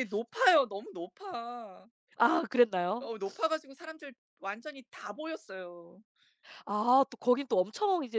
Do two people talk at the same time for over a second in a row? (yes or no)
no